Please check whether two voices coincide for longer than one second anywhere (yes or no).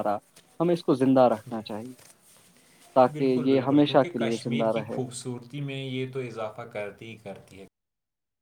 yes